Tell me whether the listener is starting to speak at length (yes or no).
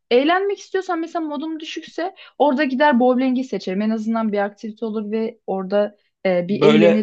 no